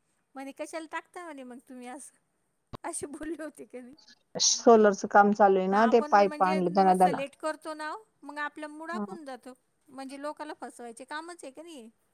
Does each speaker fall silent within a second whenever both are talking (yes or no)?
no